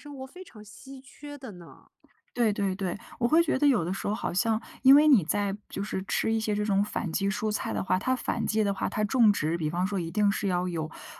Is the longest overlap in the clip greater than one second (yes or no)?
no